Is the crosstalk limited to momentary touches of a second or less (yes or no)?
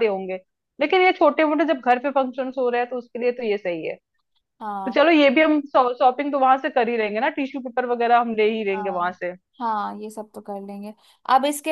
yes